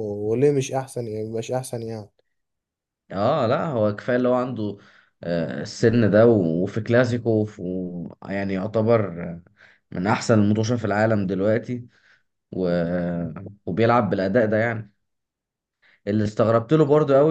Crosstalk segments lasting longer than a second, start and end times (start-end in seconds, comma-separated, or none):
none